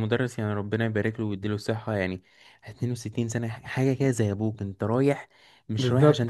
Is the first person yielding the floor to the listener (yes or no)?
no